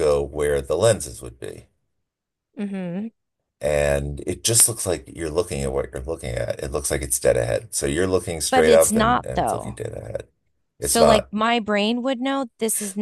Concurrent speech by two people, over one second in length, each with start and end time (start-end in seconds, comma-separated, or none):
8.5-9.7